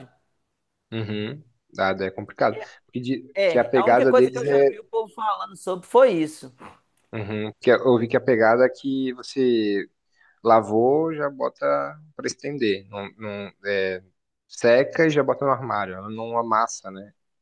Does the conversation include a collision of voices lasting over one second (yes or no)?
yes